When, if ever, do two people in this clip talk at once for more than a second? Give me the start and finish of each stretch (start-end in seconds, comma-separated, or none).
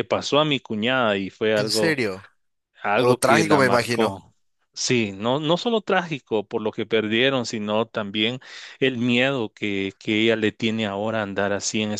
3.0-4.2